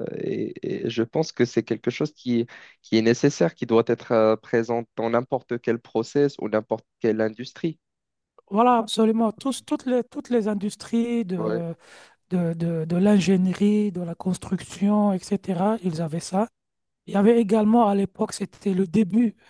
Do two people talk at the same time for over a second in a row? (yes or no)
no